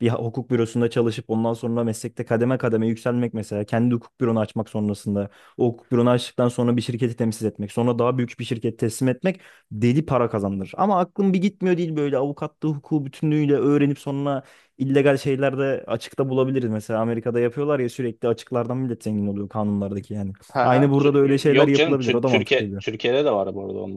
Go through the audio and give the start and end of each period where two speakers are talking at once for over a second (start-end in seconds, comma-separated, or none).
20.5-22.8